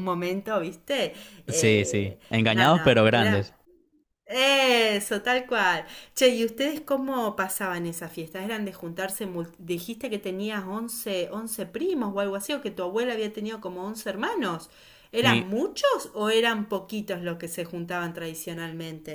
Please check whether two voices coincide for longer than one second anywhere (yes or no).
yes